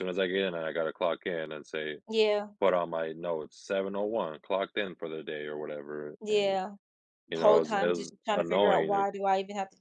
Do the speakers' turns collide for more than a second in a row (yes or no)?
yes